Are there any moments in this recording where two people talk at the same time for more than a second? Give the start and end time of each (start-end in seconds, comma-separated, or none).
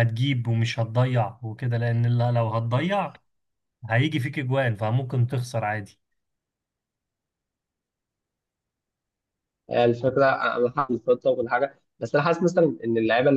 none